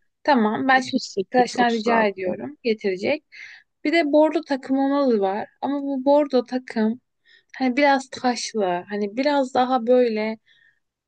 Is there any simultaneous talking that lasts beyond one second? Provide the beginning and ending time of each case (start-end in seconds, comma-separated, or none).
0.7-2.4